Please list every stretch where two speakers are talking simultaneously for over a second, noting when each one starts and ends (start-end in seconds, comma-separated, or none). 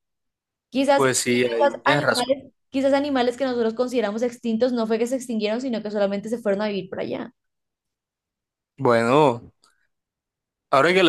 0.9-2.3